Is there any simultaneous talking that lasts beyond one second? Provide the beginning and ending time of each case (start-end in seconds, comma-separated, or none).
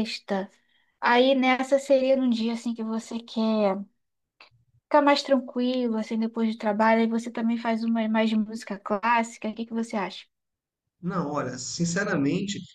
none